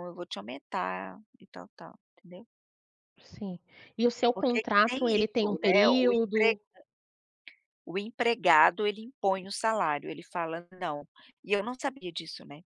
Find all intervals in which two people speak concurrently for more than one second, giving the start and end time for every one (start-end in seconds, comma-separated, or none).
4.3-6.6